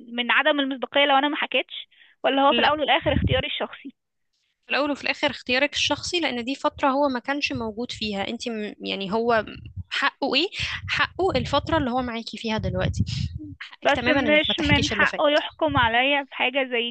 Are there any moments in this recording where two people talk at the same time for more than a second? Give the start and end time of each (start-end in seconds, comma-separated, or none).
13.8-15.4